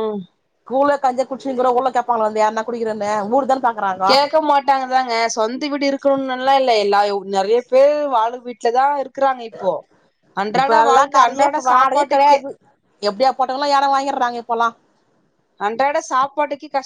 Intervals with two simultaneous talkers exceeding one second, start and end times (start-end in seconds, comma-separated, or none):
none